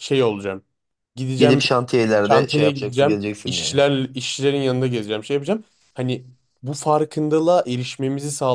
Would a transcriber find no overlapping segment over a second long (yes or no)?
no